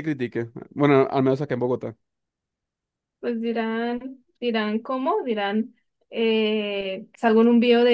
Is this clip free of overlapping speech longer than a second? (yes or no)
yes